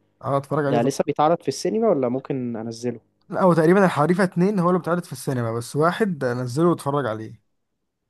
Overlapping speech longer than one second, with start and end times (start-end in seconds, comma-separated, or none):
none